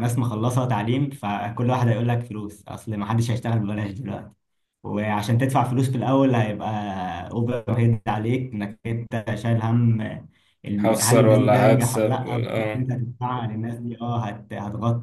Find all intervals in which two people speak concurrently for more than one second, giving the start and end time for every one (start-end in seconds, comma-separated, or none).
10.8-12.9